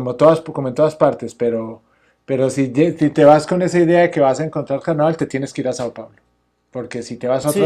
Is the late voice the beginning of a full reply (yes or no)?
no